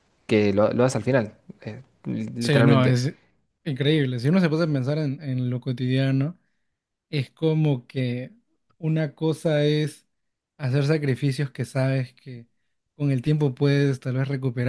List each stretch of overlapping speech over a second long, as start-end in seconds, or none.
none